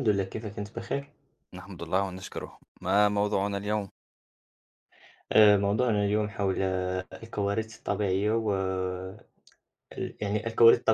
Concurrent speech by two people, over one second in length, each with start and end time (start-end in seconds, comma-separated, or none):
none